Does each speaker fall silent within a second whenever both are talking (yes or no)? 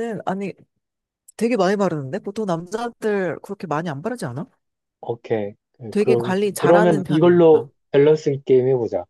no